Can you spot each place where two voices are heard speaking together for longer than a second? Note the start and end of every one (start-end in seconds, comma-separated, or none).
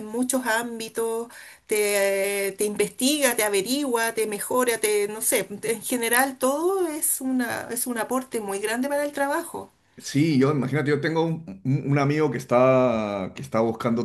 none